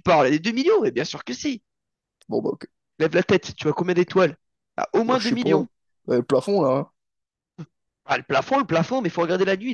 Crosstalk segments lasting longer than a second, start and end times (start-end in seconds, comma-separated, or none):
none